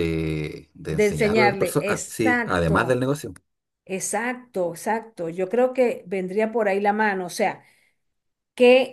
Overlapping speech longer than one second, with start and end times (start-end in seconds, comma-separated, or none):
0.9-3.0